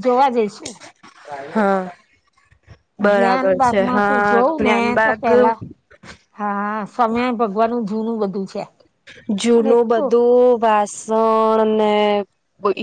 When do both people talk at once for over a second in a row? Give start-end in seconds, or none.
3.1-5.3